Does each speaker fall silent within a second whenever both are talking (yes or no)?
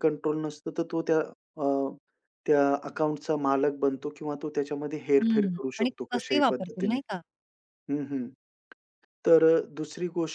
no